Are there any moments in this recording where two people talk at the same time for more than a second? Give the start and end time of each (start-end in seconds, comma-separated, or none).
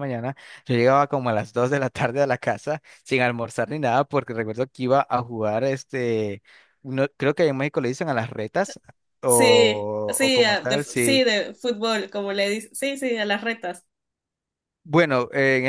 9.2-11.2